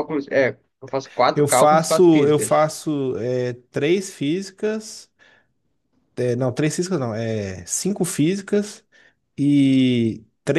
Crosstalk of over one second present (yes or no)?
yes